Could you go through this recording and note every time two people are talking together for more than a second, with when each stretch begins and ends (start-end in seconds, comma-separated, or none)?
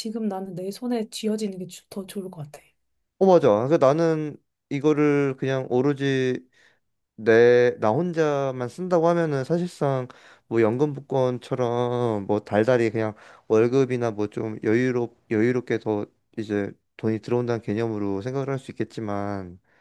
none